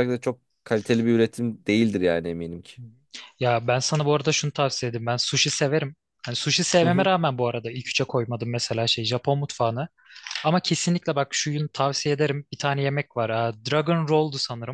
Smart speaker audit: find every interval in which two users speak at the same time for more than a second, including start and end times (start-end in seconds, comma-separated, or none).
none